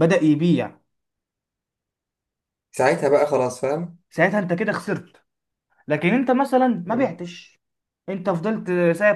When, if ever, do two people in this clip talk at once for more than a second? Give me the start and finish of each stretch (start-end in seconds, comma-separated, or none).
none